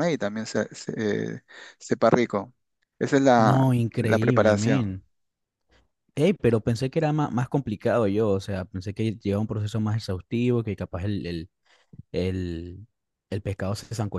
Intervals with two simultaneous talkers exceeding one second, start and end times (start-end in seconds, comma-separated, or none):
3.5-5.0